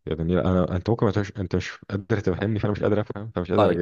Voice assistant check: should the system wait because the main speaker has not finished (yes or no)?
no